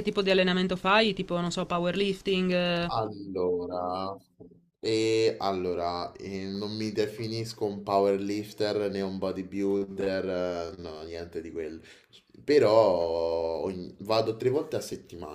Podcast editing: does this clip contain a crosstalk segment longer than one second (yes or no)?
no